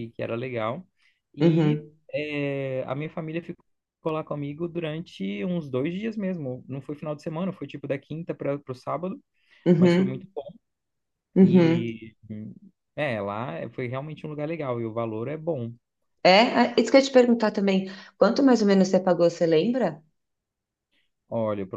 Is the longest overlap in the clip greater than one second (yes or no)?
no